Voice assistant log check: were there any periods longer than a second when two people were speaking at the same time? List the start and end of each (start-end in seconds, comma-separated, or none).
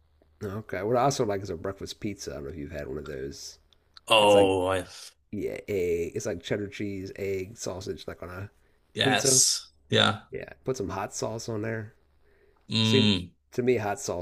none